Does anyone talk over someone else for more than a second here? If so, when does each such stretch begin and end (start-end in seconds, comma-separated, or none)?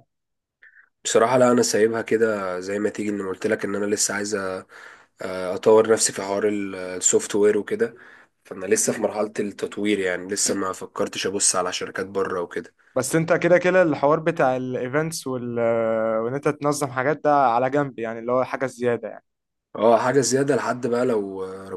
none